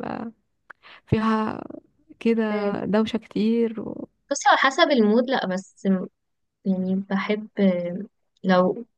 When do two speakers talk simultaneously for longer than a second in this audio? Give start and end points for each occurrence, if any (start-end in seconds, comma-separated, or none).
none